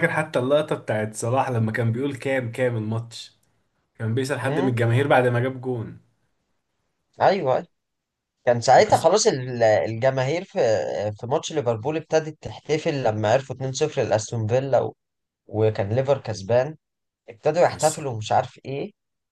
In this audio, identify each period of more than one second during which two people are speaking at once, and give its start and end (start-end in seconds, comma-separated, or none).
none